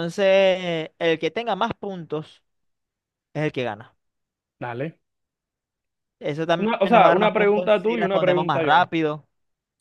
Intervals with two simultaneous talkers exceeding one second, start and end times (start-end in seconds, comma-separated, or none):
6.6-8.9